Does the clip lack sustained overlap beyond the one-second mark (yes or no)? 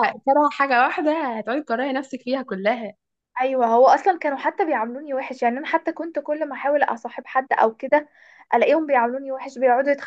yes